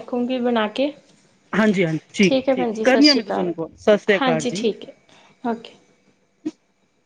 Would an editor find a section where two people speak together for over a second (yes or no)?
yes